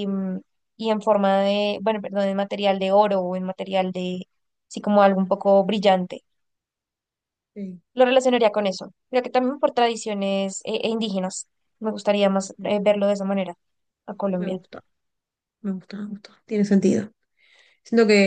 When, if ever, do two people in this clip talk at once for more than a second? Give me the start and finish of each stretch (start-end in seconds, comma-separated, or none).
none